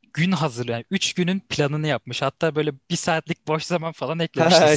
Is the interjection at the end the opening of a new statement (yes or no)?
yes